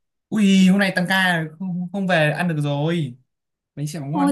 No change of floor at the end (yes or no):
no